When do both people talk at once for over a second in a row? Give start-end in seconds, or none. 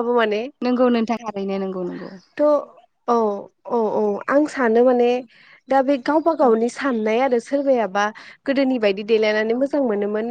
none